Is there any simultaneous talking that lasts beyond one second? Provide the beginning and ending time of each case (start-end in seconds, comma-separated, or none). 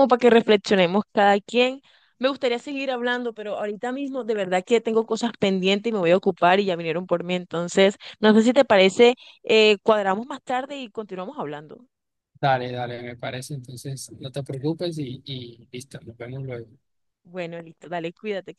none